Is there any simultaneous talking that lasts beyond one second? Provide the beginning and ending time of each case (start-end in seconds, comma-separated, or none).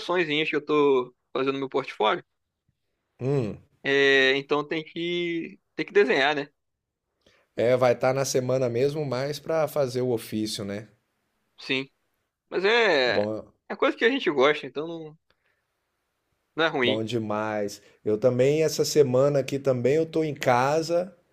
none